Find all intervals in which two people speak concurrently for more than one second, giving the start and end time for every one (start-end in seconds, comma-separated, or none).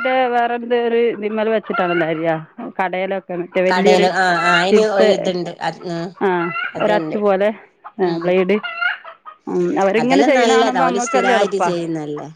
10.0-11.6